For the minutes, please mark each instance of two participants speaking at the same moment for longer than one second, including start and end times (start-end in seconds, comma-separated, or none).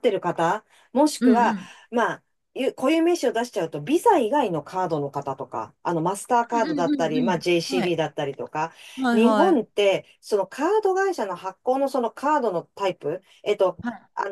6.5-7.9